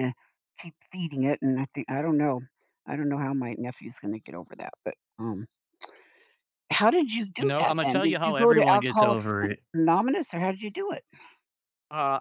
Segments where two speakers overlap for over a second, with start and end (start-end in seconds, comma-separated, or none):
7.4-9.3